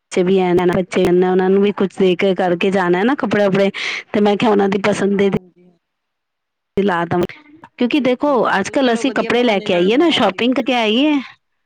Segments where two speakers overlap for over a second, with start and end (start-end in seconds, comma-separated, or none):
8.0-10.7